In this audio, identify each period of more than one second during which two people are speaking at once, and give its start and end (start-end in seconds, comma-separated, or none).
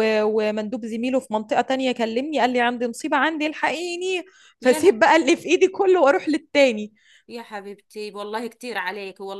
none